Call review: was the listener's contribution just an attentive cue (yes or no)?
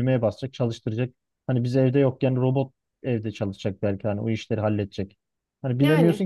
yes